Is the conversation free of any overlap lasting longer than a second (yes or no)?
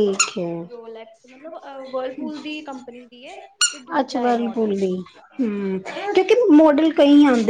yes